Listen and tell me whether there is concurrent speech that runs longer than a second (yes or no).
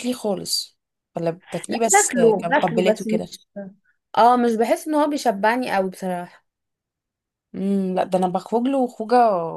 yes